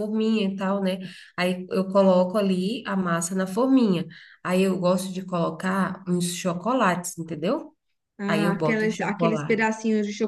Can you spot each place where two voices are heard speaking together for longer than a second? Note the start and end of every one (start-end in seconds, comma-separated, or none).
8.3-9.6